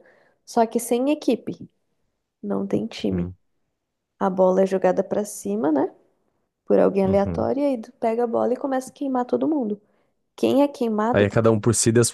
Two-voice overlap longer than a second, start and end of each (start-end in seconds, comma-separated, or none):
none